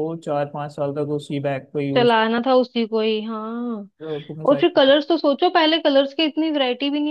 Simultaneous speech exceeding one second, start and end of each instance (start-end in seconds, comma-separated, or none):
none